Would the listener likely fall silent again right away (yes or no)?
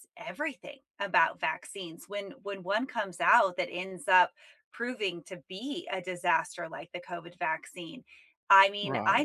yes